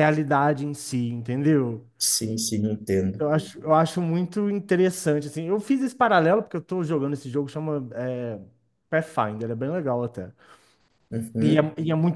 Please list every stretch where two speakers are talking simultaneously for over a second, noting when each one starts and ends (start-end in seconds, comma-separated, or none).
none